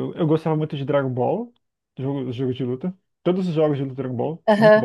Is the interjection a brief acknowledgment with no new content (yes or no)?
no